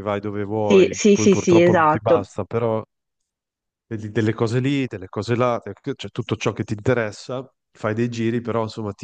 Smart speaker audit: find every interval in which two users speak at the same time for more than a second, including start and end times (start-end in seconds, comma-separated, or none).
0.6-2.2